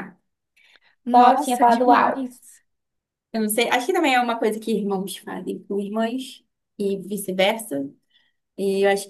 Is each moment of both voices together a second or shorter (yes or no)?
no